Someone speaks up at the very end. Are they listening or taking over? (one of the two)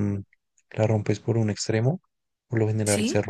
listening